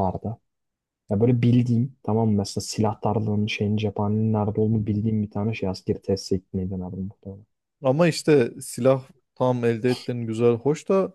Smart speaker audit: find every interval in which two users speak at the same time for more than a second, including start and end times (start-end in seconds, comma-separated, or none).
none